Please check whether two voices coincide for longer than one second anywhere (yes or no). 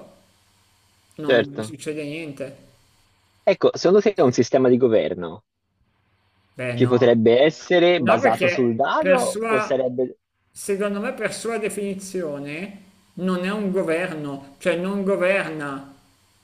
yes